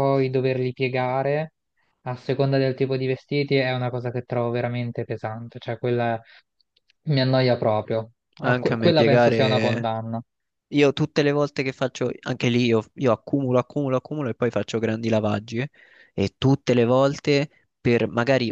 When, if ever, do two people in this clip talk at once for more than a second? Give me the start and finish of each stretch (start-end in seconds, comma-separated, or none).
8.4-9.9